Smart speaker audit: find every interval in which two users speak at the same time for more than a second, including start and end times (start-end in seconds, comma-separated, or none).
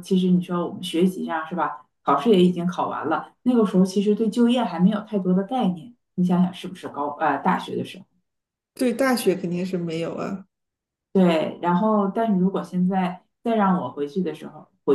none